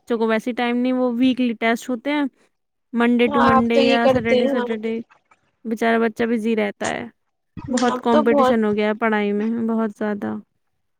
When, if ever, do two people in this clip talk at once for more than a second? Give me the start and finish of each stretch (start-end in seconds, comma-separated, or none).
3.3-5.0